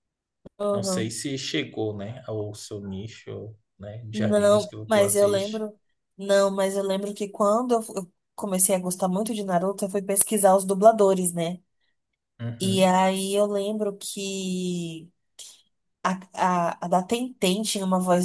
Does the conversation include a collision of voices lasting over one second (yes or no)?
yes